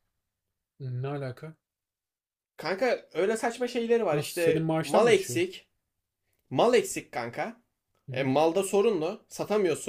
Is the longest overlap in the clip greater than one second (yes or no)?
yes